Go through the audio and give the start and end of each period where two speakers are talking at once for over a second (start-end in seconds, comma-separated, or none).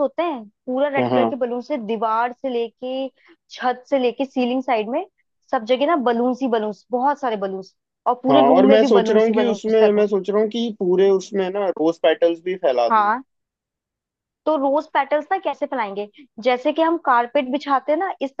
8.3-10.0